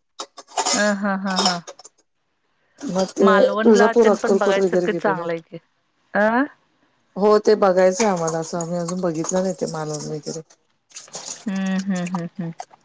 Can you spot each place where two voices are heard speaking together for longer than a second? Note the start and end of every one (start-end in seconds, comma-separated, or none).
3.3-5.2